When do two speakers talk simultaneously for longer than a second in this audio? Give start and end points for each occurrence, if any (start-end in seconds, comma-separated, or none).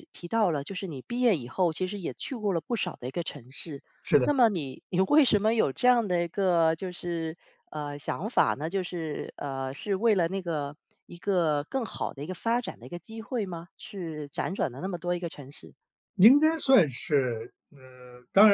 none